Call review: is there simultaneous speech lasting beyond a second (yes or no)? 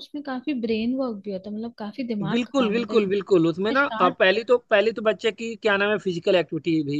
yes